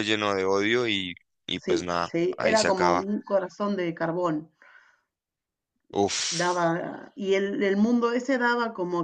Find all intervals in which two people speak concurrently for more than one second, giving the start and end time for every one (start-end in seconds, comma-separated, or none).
1.5-3.0